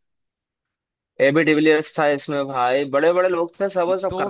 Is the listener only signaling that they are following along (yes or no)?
no